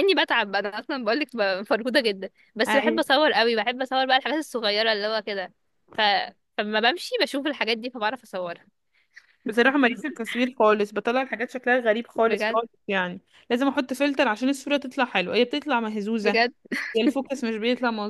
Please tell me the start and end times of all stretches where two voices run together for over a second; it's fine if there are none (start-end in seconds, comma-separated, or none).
none